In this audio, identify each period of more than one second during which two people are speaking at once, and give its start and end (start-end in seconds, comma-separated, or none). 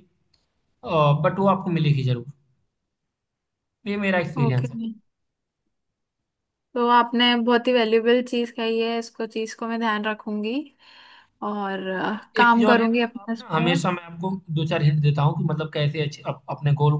12.1-13.7